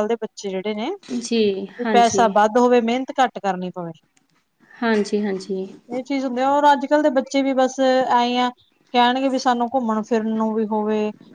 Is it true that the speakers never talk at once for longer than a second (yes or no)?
yes